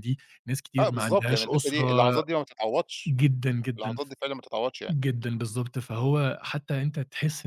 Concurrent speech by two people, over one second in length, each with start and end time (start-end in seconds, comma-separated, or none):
0.8-2.2